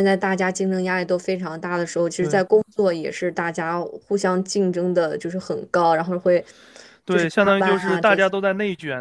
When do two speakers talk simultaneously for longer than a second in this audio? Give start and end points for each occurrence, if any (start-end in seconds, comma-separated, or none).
7.1-8.4